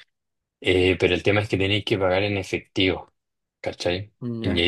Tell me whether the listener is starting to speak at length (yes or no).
no